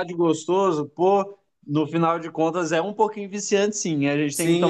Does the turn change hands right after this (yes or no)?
yes